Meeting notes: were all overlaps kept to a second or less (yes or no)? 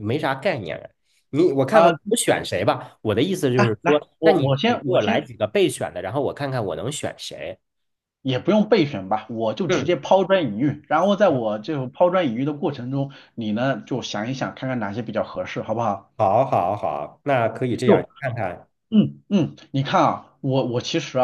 no